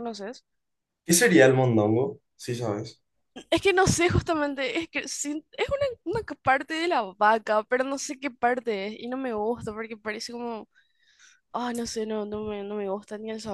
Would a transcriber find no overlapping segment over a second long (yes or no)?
yes